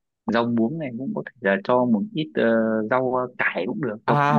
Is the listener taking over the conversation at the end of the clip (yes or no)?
yes